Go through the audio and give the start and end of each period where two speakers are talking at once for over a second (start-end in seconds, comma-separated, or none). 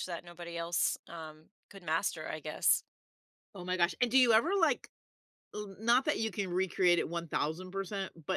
none